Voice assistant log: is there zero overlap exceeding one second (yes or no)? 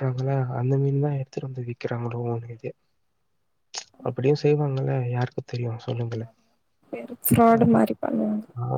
yes